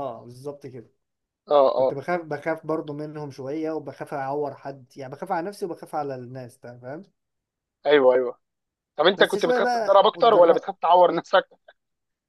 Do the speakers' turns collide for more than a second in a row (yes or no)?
yes